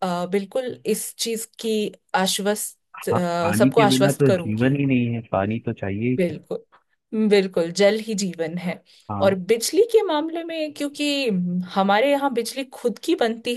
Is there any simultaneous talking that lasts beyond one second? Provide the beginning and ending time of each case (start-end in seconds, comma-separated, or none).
3.0-4.8